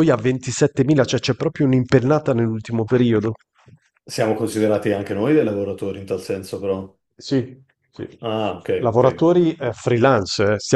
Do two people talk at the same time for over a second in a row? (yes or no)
no